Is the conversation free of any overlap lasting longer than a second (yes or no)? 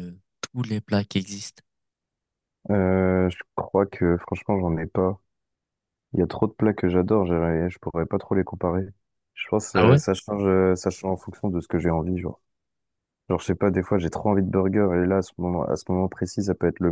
yes